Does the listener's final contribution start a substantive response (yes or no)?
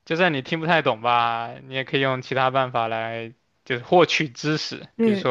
no